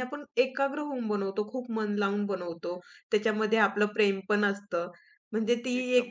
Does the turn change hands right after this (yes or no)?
no